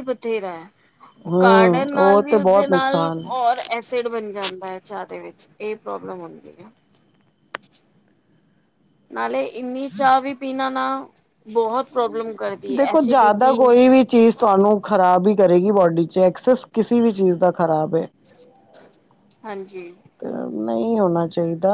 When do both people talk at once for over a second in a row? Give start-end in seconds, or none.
1.3-3.3